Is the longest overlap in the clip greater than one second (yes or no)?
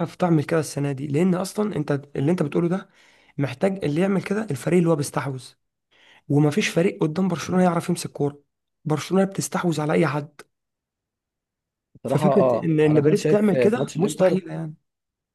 yes